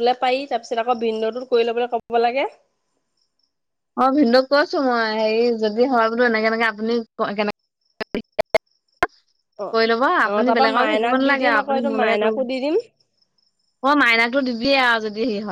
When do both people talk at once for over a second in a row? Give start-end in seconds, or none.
10.3-12.4